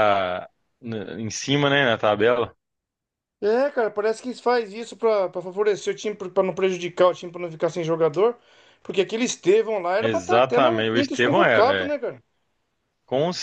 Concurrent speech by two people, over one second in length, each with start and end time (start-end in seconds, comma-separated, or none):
10.0-11.9